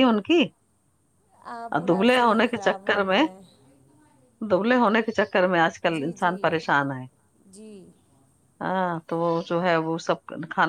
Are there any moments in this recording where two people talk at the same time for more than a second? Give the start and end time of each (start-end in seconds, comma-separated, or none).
1.8-3.2